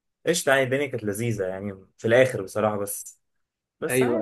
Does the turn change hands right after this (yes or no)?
no